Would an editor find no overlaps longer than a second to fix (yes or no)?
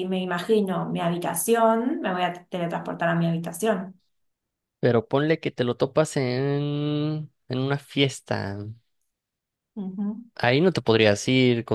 yes